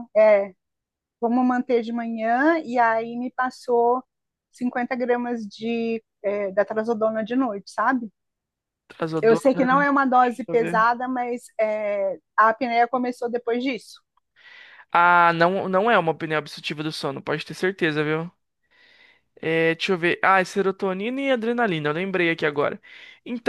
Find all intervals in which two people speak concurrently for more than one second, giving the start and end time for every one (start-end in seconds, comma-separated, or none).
9.2-10.9